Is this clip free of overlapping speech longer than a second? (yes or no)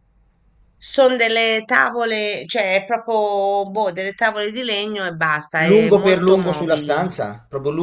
no